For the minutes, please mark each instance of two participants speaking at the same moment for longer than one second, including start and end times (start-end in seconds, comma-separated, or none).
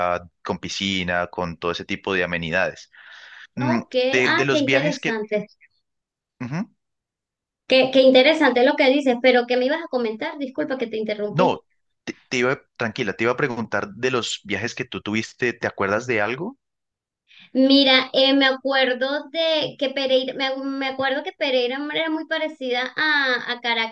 3.6-5.2